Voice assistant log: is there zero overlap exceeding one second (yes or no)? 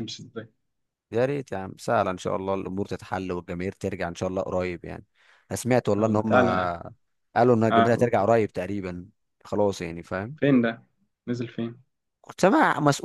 yes